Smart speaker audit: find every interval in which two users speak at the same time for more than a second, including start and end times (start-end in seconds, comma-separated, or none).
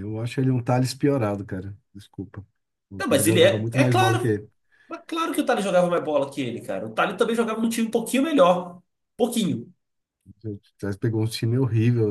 3.0-4.4